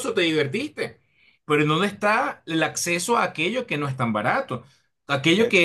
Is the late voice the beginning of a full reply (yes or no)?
no